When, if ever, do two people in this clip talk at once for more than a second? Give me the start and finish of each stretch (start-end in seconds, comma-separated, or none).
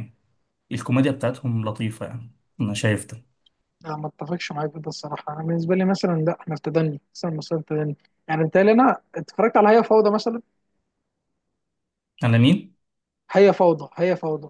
none